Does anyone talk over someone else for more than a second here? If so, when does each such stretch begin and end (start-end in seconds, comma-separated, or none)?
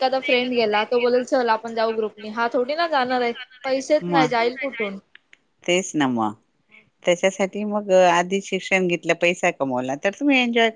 none